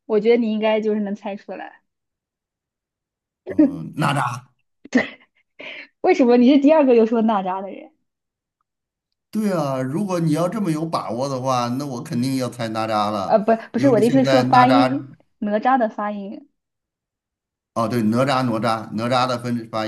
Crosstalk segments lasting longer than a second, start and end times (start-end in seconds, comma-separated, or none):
13.2-15.1